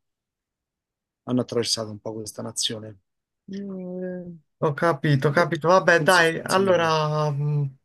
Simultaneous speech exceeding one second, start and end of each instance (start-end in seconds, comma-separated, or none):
5.3-6.9